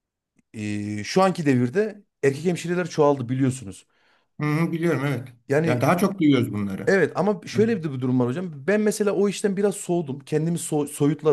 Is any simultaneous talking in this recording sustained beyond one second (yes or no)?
no